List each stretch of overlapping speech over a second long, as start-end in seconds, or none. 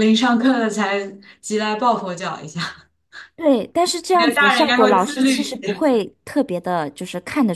4.1-5.5